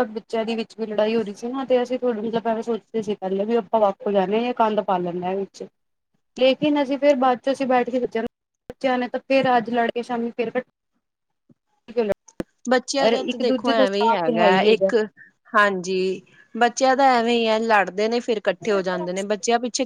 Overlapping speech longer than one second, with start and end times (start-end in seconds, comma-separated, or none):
12.9-14.7